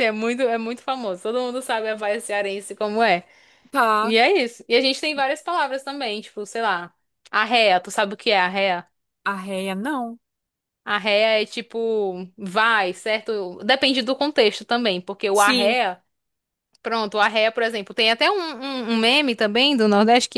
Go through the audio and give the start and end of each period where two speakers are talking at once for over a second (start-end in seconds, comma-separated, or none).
none